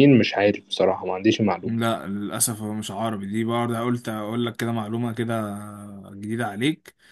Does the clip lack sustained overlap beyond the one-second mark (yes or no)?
yes